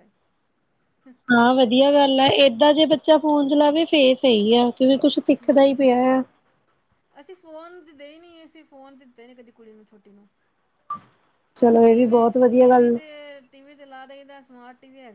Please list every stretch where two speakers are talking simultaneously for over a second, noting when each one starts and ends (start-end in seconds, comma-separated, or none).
none